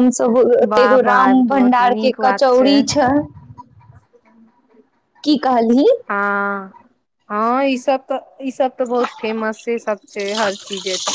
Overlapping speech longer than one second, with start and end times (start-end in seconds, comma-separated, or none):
0.7-2.5